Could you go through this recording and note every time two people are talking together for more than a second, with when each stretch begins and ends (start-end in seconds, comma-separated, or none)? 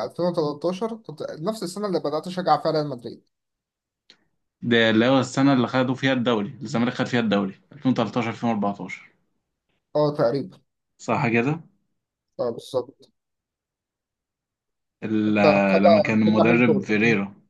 15.3-16.9